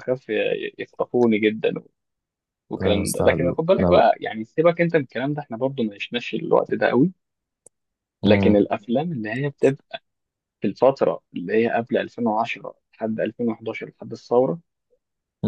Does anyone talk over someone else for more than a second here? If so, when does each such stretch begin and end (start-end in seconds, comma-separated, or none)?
2.8-4.1